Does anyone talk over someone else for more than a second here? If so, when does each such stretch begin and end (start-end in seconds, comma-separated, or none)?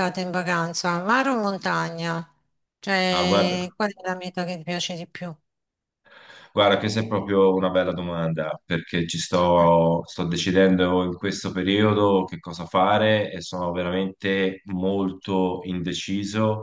none